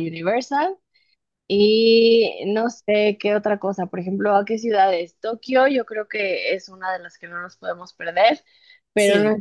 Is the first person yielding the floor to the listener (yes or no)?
no